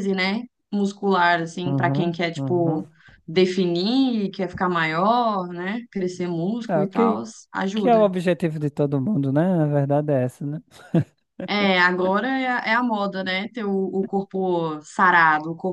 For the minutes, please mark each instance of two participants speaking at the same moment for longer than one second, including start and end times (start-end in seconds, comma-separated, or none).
1.6-2.9